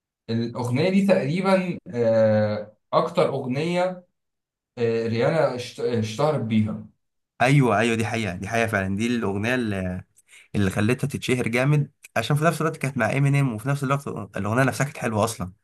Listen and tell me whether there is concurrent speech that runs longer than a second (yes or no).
no